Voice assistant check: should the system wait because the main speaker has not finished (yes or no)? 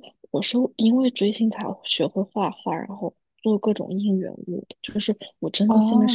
no